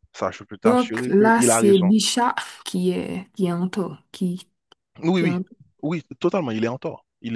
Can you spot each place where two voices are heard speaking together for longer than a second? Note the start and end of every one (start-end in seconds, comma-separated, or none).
0.6-1.9